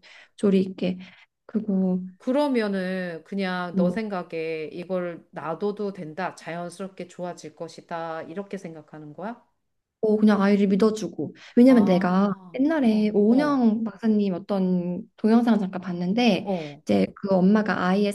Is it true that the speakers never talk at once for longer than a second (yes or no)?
no